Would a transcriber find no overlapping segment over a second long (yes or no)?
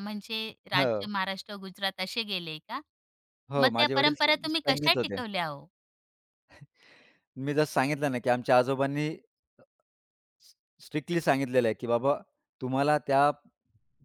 no